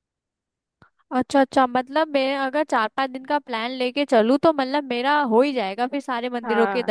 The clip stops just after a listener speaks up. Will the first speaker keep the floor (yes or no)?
no